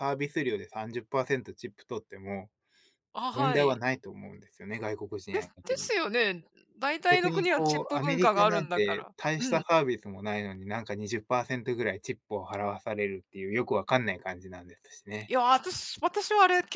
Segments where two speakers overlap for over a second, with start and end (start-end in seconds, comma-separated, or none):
7.1-9.6